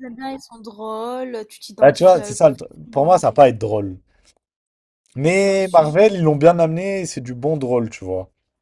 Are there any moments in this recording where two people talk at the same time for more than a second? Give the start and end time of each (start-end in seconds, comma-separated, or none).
1.8-3.2